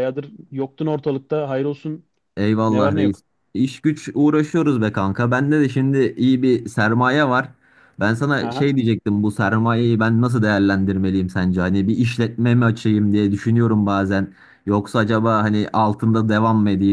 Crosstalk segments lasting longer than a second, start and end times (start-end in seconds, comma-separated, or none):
none